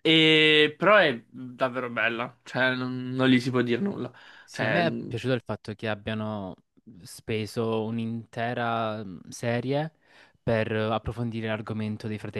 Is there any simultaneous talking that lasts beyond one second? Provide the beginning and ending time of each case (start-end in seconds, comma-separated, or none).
none